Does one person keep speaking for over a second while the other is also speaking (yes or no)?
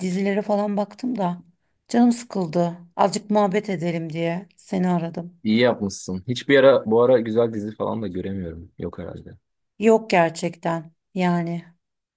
no